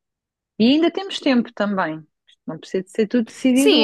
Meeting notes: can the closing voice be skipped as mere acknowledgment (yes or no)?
no